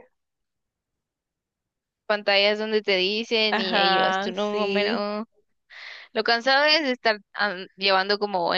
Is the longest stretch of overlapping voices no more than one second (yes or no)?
no